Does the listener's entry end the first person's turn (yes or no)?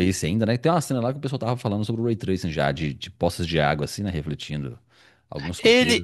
yes